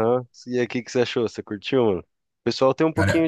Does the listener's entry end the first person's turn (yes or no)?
no